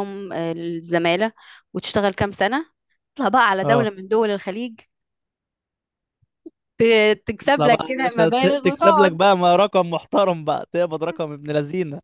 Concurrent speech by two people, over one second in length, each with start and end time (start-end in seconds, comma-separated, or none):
7.5-9.2